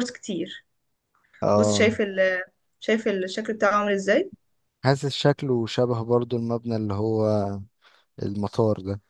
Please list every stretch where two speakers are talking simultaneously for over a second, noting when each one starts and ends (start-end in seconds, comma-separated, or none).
none